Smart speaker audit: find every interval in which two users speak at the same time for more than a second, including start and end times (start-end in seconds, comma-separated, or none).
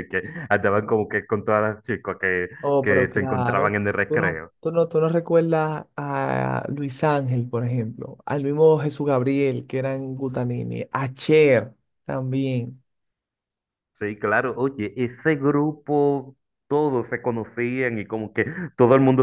2.6-4.5